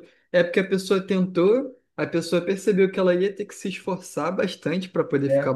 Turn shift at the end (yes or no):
no